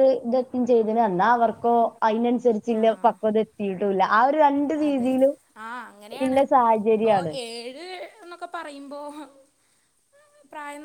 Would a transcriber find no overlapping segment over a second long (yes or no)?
yes